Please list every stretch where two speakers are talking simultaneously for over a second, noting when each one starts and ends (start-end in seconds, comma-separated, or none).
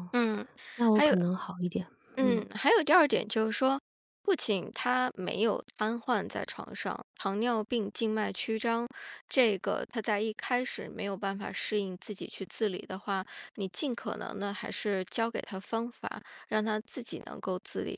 none